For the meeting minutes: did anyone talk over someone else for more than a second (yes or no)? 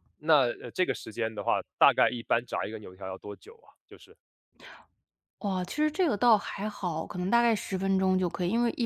no